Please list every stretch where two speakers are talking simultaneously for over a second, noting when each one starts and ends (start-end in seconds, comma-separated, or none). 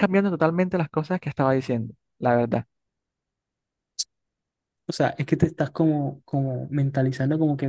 none